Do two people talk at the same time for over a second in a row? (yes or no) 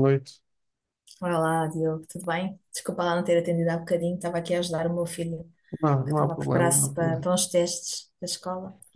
yes